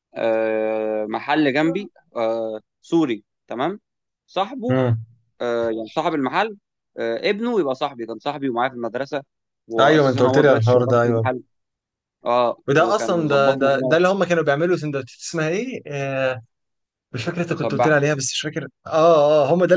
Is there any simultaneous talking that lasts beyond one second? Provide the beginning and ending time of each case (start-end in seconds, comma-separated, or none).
9.8-11.3, 12.7-14.0